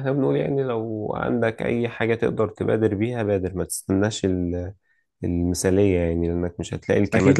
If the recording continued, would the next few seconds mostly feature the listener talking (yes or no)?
yes